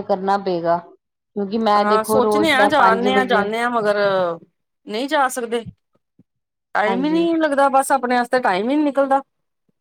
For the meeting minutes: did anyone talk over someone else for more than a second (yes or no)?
yes